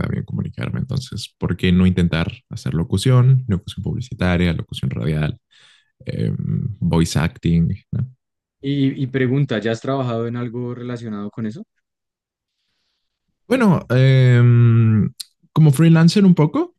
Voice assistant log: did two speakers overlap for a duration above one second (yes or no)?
no